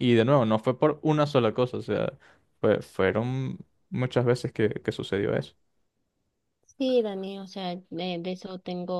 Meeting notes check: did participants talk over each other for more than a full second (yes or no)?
no